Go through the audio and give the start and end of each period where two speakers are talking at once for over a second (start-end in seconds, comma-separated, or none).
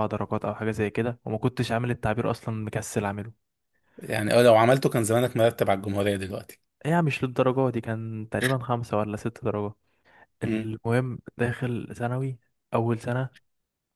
none